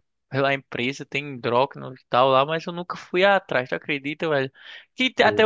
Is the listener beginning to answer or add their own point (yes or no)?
no